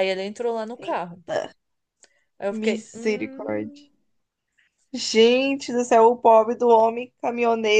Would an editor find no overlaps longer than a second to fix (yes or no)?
no